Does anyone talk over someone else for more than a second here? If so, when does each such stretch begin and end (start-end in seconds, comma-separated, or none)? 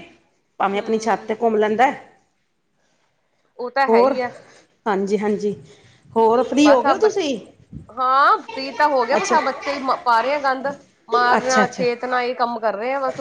none